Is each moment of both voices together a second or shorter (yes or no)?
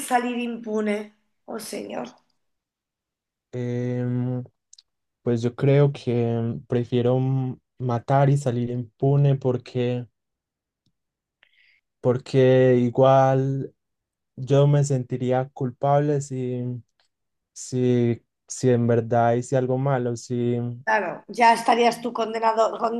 yes